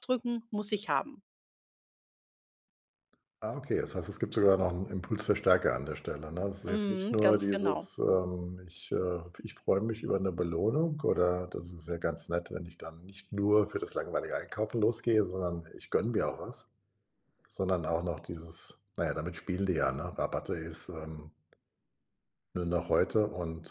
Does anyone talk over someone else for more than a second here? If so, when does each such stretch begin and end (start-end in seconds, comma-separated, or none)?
6.7-7.9